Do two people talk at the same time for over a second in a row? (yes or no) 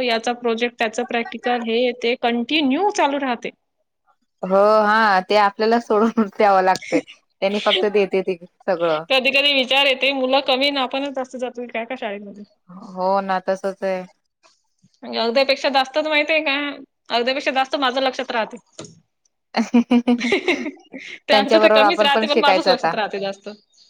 yes